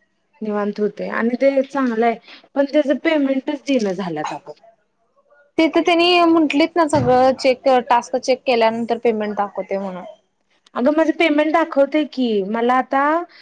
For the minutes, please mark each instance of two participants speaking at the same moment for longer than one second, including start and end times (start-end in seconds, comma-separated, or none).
none